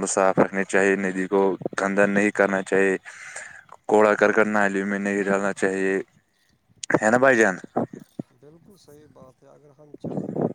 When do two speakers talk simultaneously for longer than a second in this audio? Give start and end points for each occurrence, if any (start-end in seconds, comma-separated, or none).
none